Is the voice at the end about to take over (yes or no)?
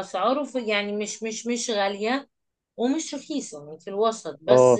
yes